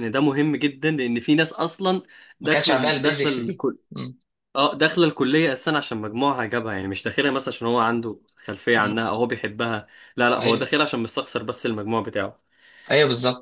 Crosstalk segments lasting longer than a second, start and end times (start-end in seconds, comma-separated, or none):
2.4-3.8